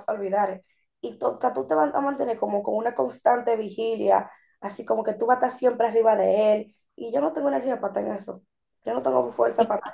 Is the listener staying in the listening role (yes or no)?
yes